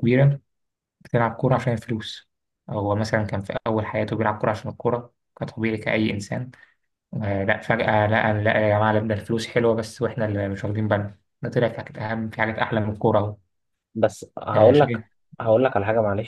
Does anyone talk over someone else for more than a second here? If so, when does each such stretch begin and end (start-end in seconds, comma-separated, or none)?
none